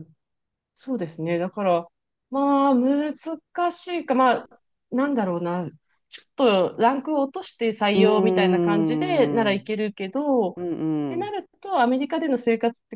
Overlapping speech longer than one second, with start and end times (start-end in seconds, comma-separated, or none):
7.9-9.7